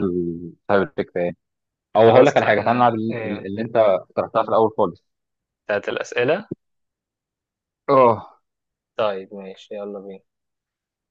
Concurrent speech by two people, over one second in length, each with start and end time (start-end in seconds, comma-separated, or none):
1.9-3.5